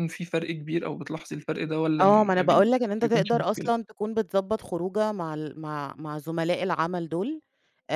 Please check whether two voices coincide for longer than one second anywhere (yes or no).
yes